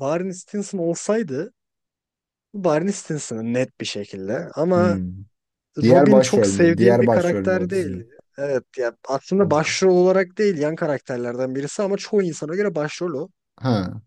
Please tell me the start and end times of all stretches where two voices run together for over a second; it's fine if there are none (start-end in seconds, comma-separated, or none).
5.8-8.0